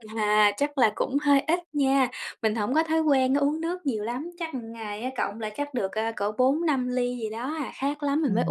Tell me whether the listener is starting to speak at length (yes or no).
yes